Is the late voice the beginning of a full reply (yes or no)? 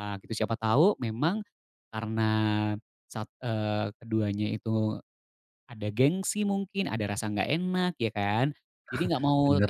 no